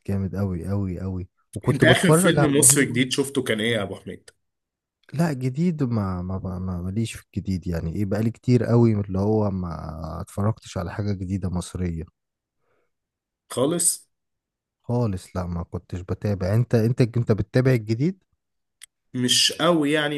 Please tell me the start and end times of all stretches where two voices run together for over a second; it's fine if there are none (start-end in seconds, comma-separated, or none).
1.7-3.0